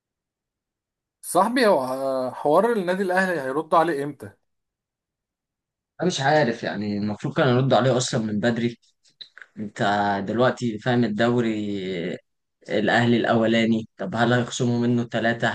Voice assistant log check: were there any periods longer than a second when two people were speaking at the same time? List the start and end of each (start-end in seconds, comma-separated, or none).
none